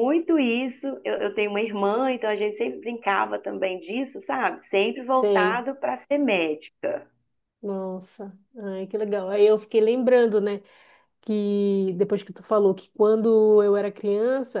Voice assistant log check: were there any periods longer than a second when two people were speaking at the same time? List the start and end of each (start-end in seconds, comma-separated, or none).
none